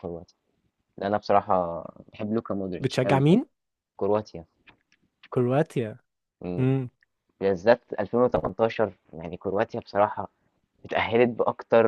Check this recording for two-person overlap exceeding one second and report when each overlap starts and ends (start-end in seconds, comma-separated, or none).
none